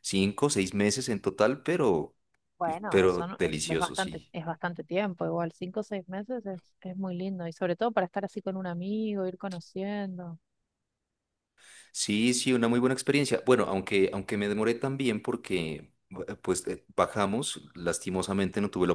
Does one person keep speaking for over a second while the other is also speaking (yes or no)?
yes